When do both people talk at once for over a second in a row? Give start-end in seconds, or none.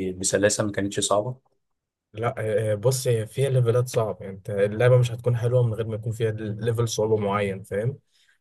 none